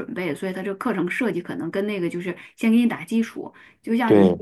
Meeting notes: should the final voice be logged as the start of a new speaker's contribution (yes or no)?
no